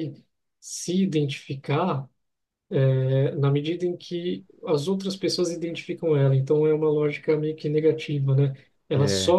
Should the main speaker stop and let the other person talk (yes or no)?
no